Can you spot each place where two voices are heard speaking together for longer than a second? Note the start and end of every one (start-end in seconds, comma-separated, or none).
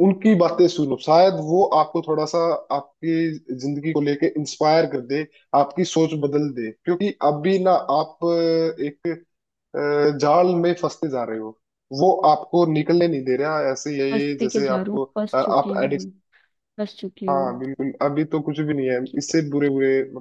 14.1-16.1